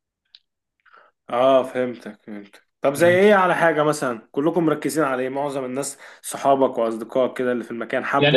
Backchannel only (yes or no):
no